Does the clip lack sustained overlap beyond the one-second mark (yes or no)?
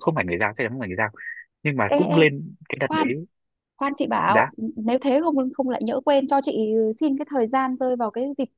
yes